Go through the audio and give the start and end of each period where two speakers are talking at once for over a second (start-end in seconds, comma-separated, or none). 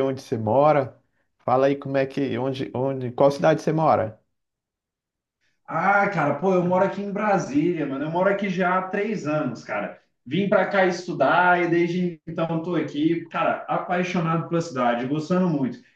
none